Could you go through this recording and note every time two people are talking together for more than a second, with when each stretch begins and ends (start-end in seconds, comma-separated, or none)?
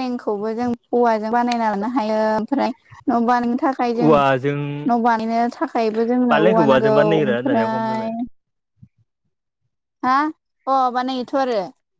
6.3-8.0